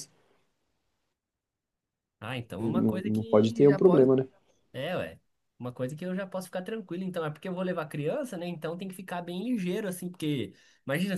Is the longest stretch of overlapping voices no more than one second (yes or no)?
no